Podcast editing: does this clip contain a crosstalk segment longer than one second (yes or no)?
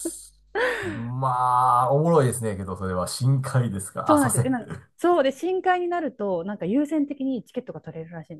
no